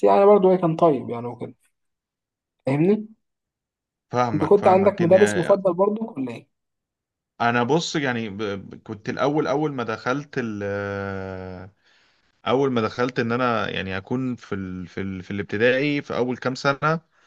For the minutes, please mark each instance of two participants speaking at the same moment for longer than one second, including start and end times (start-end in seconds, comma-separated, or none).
4.3-5.6